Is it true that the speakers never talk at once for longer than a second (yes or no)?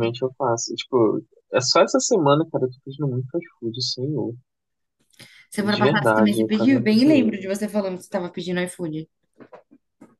no